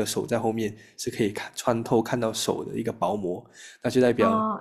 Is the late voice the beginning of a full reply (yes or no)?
yes